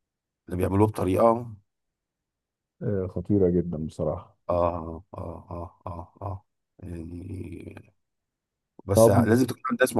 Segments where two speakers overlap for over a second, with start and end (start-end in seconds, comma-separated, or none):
none